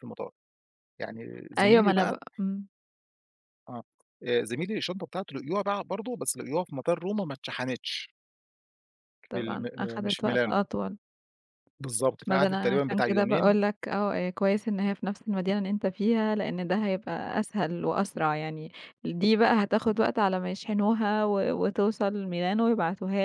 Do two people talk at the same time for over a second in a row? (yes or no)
yes